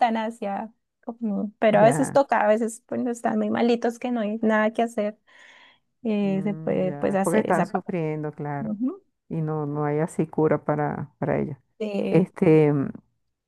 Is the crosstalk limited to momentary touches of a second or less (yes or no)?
no